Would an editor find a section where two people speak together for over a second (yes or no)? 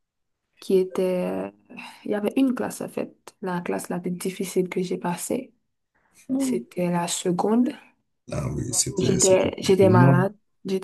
yes